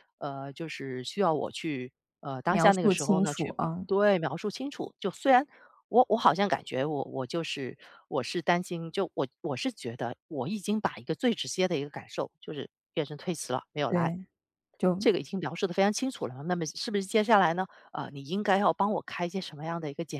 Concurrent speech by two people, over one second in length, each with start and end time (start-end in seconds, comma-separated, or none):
2.5-3.9